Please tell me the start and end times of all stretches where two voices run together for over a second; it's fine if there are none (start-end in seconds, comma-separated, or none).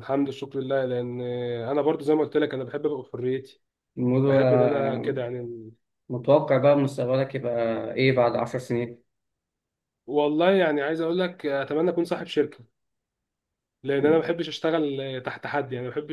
none